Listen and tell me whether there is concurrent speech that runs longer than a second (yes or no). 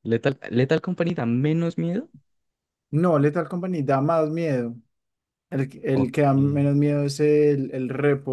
no